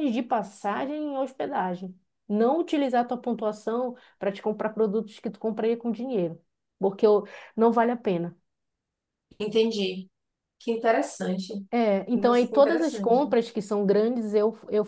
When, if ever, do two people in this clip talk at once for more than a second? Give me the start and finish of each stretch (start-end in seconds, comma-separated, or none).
12.1-13.3